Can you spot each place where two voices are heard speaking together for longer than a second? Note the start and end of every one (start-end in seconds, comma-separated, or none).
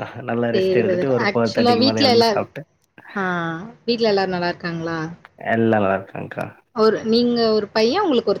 0.6-2.4